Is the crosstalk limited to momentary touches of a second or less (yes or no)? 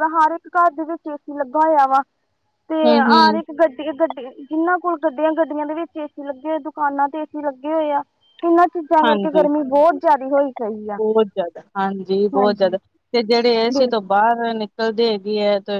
yes